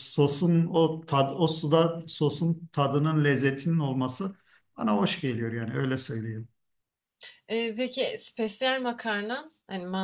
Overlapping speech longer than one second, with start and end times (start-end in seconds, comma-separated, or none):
none